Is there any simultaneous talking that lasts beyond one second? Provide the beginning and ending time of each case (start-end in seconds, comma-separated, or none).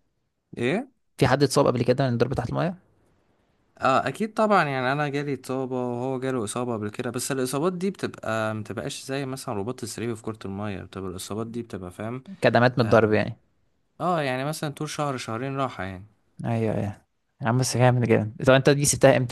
none